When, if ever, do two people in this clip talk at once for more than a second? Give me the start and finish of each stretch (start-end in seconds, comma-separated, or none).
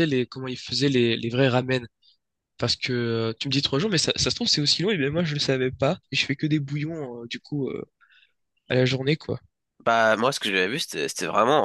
none